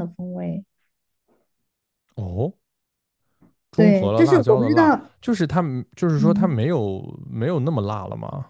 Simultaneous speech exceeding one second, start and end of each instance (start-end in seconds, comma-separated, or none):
3.7-5.1